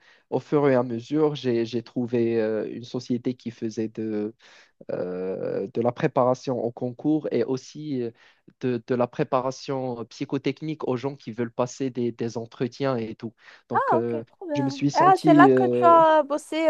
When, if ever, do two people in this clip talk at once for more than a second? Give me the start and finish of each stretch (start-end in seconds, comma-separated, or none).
13.7-16.0